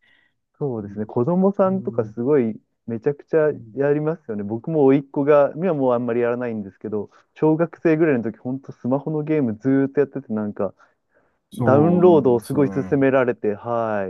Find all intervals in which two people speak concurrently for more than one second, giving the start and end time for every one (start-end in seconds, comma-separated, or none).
11.5-13.1